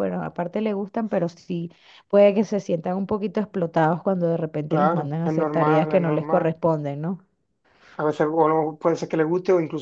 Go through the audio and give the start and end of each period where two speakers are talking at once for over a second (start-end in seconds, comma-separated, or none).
4.7-6.5